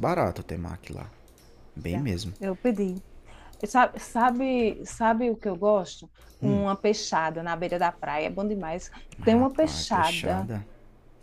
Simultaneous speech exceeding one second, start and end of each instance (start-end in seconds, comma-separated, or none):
9.2-10.5